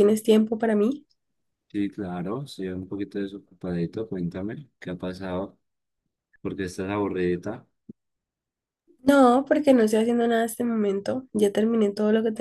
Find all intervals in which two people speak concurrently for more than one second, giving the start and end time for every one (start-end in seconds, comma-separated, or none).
none